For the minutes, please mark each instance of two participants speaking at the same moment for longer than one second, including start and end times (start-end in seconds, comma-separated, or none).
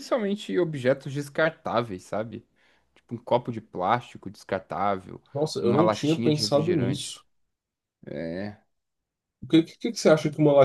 5.6-7.2